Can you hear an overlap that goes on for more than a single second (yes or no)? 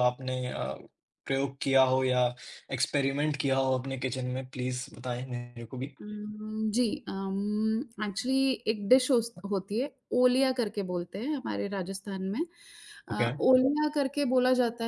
no